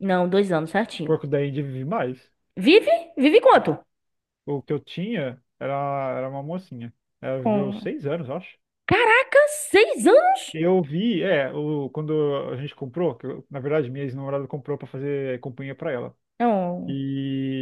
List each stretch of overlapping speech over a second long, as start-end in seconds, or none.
none